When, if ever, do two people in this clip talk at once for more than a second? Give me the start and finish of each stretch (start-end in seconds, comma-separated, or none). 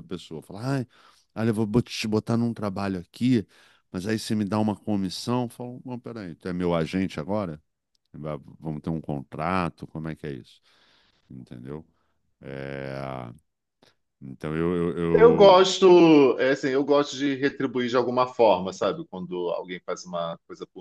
none